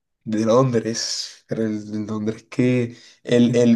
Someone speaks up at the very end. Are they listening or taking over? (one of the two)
listening